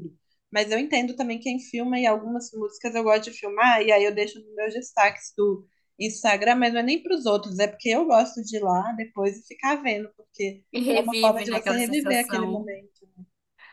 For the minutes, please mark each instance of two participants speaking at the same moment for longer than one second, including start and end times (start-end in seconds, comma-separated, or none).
10.7-12.7